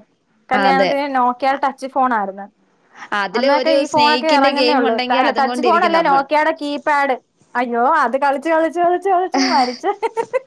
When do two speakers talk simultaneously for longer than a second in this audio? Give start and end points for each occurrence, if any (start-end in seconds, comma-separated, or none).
3.4-6.2